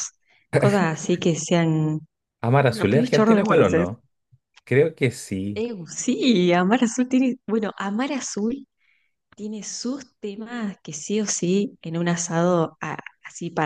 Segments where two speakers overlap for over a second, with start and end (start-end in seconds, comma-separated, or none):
2.7-3.9